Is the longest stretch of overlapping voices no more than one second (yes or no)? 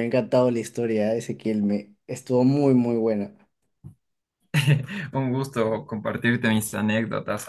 yes